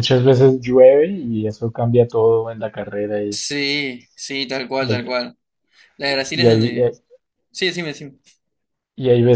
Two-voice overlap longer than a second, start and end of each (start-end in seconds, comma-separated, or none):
none